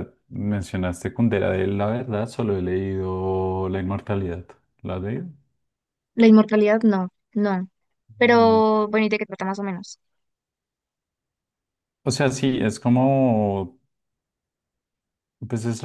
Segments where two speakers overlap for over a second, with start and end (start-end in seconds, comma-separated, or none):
none